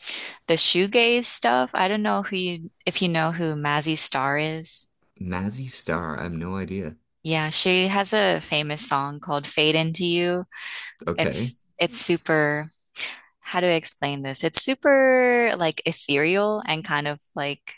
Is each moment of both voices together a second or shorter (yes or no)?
yes